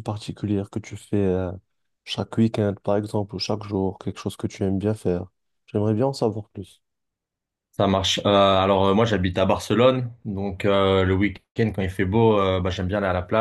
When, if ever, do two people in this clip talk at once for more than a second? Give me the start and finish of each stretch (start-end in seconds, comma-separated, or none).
none